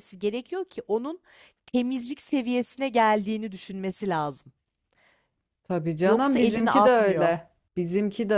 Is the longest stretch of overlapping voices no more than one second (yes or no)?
no